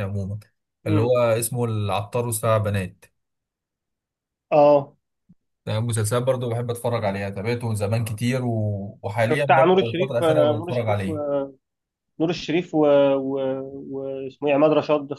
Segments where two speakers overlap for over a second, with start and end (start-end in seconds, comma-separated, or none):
9.3-11.2